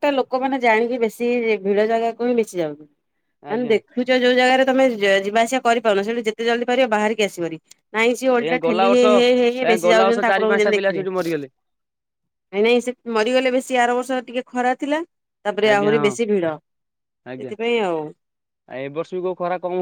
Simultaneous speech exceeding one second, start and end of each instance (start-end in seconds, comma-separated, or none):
8.4-11.1